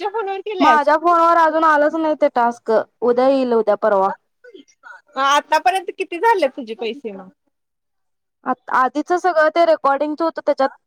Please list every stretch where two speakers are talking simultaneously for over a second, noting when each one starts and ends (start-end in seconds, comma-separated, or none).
none